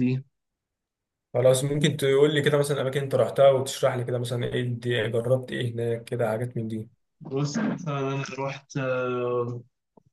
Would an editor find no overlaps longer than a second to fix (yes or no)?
yes